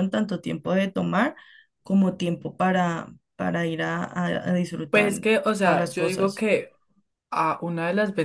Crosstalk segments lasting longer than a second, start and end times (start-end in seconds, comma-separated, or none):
4.9-6.5